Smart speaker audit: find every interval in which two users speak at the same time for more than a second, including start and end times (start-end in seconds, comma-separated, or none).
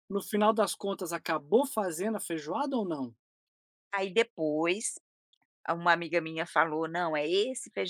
none